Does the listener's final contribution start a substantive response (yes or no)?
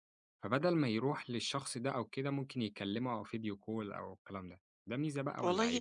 yes